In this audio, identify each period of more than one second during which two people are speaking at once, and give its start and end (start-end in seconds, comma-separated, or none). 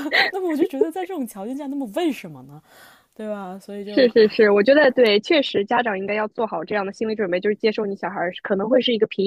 none